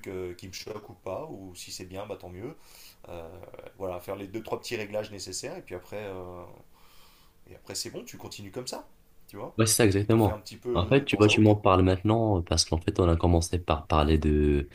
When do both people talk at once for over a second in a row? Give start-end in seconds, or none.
10.0-11.6